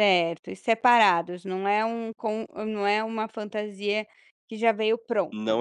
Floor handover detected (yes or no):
yes